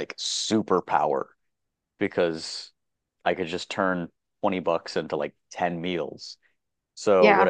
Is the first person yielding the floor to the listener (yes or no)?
no